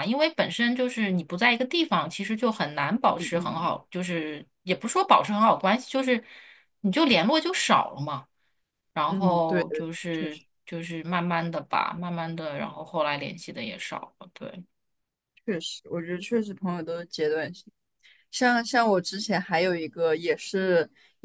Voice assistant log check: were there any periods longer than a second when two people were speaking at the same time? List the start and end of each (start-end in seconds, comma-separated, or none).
9.1-10.4